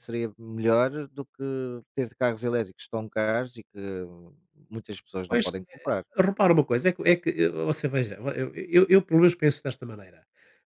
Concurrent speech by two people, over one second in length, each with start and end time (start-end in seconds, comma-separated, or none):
none